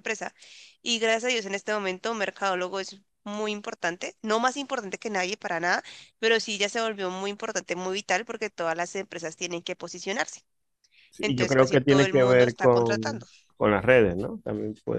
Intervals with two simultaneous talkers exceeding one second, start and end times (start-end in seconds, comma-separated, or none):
11.2-13.3